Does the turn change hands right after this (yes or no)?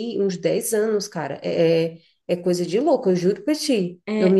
yes